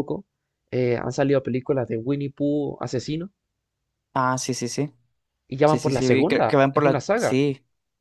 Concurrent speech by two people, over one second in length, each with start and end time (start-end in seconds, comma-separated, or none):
5.7-7.4